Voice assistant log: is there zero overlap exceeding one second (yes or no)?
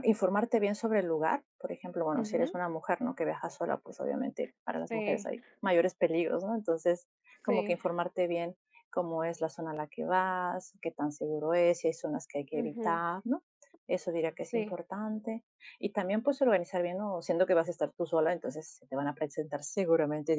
yes